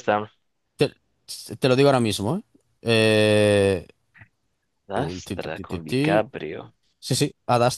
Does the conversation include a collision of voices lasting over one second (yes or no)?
yes